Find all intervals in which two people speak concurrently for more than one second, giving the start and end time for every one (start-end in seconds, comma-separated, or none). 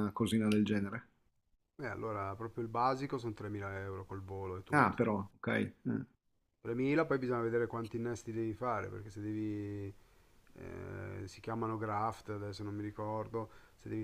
none